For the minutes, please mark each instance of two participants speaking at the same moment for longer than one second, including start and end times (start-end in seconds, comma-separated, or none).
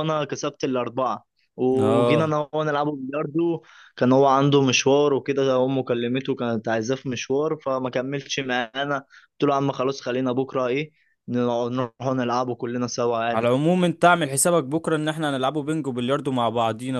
none